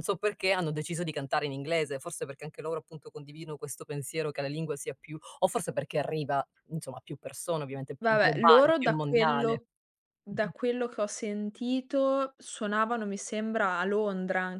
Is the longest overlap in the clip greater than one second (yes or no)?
yes